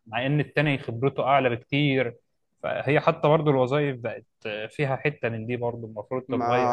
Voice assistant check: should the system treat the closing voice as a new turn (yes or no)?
yes